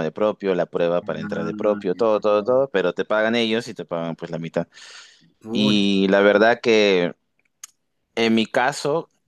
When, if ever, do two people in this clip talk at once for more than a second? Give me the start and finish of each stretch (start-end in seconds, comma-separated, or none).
1.0-2.7